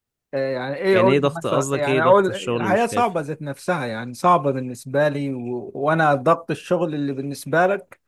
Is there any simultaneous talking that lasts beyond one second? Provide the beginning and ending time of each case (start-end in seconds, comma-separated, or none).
0.9-3.2